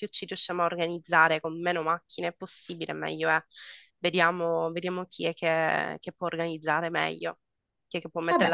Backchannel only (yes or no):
no